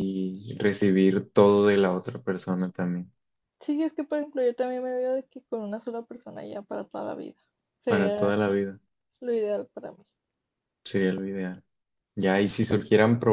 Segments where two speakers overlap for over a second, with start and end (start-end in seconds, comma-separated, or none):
none